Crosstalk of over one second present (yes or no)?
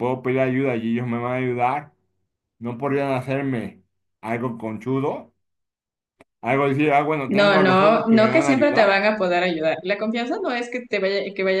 yes